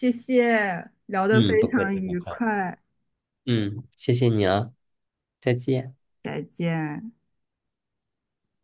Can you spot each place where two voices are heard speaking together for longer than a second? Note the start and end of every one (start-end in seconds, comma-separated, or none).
1.3-2.6